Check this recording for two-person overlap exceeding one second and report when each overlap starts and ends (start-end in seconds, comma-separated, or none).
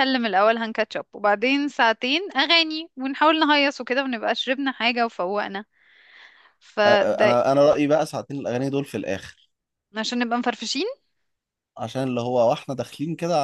none